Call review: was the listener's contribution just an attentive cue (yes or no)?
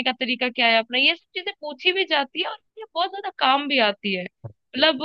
yes